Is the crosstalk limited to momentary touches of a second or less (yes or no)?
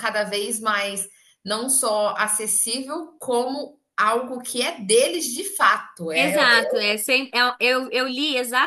yes